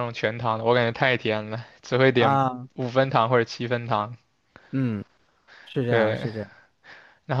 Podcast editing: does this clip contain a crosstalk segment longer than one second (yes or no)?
no